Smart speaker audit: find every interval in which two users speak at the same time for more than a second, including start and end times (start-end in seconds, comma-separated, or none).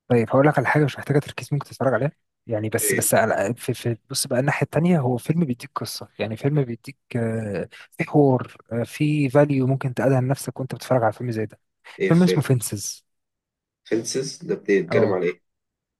none